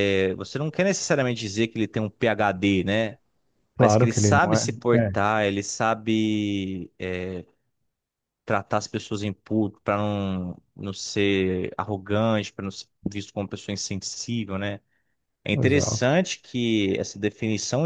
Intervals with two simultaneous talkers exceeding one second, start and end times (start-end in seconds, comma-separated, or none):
3.8-5.1